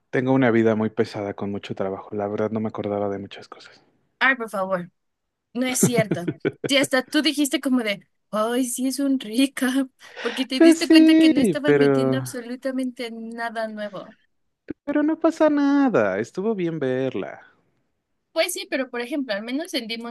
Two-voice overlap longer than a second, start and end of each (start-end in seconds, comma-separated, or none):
10.5-12.2